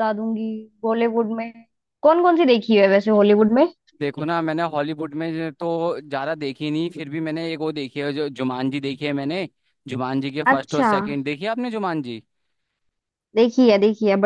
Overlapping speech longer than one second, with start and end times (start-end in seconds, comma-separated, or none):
none